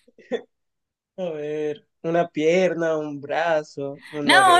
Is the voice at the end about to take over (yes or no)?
yes